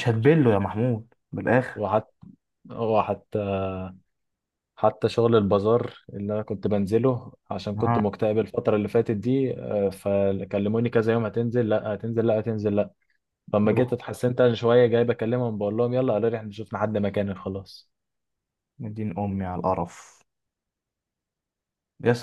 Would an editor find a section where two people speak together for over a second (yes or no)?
no